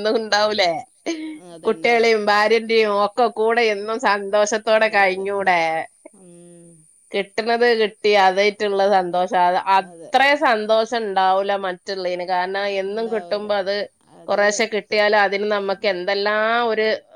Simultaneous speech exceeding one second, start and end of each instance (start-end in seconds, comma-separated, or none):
none